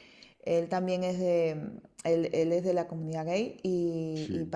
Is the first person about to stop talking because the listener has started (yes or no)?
no